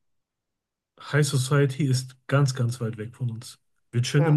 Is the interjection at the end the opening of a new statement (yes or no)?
no